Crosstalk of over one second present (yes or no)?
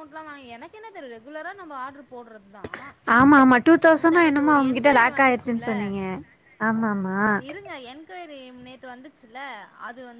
yes